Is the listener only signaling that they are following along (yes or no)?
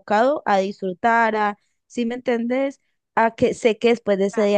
yes